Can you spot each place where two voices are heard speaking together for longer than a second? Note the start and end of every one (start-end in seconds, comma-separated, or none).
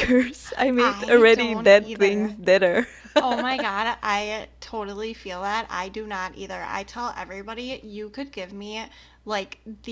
0.8-2.3